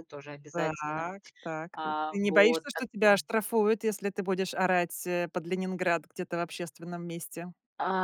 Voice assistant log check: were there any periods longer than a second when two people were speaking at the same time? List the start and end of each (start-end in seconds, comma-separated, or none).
1.7-3.2